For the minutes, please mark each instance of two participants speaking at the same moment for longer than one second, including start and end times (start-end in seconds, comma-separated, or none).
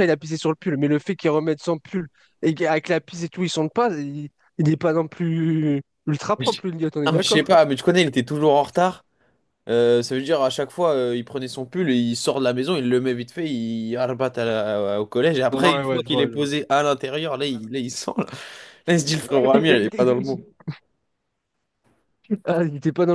19.1-20.4